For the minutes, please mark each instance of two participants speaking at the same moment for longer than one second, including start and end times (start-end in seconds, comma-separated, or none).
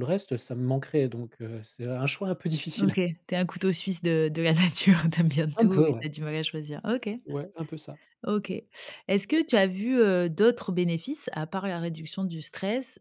none